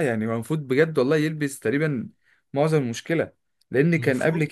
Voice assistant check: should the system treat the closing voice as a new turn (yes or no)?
no